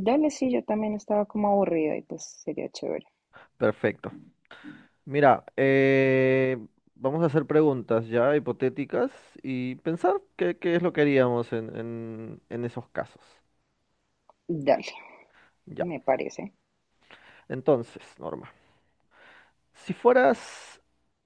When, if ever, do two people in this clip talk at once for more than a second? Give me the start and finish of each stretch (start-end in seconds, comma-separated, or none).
none